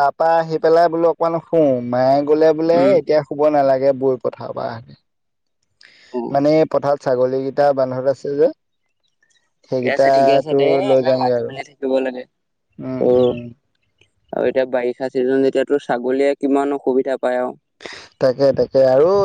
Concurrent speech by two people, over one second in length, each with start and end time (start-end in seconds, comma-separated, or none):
9.7-11.5